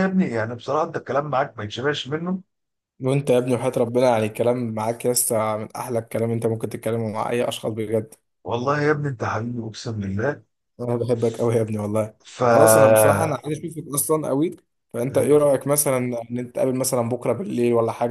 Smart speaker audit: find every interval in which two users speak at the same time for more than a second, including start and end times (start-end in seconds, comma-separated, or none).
none